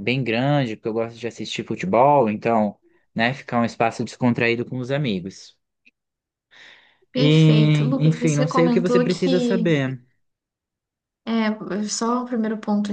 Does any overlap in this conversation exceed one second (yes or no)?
yes